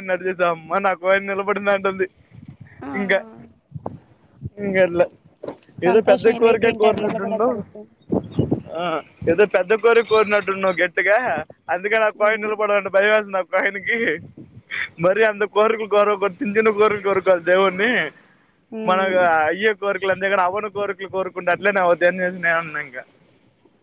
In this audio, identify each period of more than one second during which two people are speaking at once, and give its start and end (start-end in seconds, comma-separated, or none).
5.9-7.5